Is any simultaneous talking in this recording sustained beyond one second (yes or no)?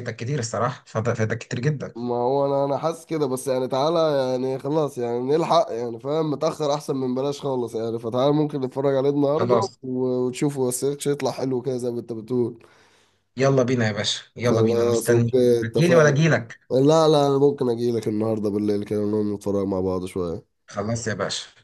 yes